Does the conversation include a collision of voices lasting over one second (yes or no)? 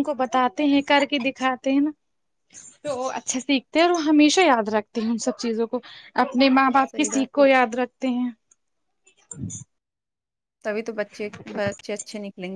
no